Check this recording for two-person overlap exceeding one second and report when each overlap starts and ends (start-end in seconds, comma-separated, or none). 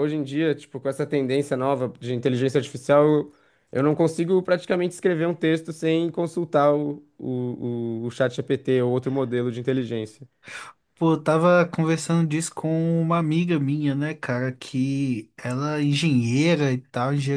none